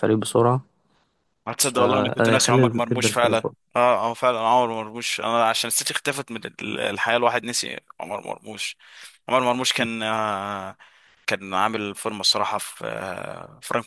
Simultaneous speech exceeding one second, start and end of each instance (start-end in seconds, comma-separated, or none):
1.6-3.4